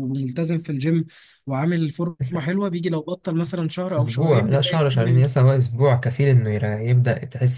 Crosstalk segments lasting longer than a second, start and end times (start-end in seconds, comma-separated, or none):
4.0-5.2